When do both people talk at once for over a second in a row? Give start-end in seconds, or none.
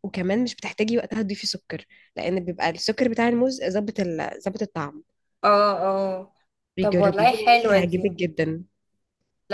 6.8-8.1